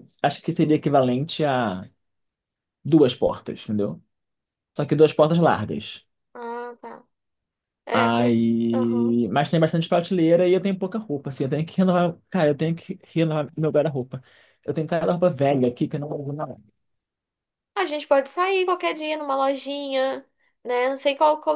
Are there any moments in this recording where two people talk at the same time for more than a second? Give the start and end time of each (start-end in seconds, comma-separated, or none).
7.9-9.2